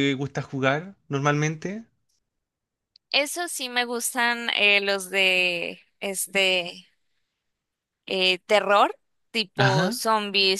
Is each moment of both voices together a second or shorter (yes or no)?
yes